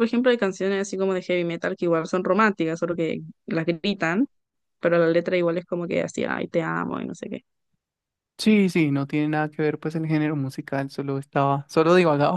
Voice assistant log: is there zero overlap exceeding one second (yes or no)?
yes